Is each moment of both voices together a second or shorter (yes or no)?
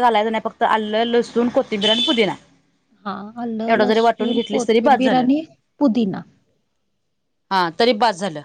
no